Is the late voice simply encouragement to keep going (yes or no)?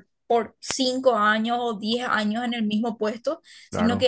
yes